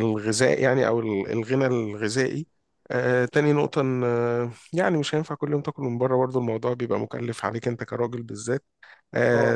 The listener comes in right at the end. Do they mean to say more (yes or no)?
no